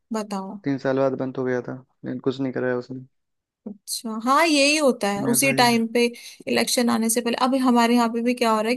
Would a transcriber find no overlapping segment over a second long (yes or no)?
yes